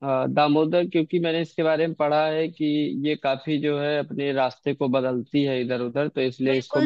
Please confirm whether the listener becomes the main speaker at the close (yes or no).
yes